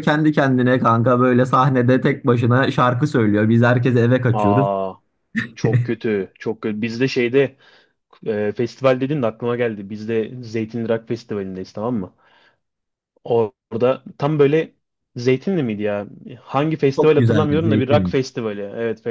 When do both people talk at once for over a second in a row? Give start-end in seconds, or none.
17.0-18.2